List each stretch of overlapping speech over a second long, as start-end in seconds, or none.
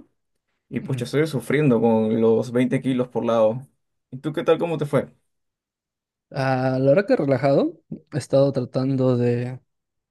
none